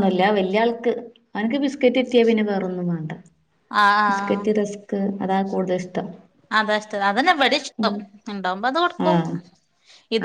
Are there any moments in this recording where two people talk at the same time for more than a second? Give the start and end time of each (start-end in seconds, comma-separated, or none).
none